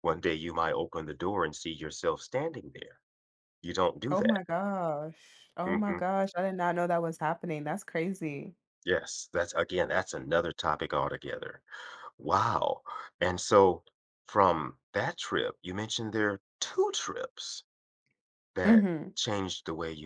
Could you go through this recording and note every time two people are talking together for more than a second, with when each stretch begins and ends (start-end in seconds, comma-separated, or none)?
none